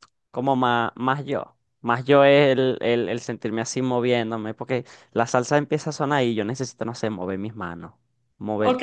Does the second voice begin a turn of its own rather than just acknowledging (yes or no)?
yes